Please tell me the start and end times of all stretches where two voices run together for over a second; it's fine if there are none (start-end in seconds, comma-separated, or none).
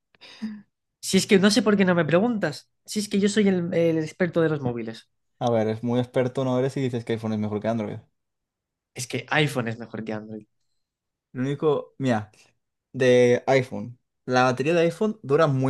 none